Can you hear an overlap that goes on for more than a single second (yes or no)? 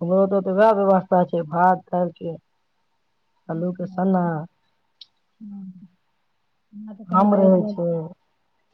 no